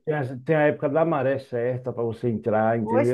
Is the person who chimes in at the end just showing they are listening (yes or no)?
no